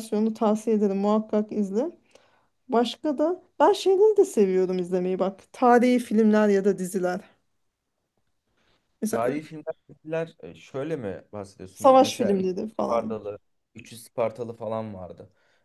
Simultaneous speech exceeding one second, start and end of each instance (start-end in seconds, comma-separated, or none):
11.7-13.2